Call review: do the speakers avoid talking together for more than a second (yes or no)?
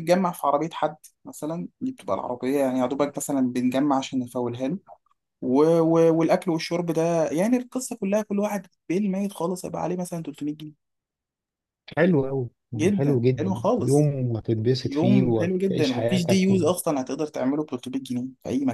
no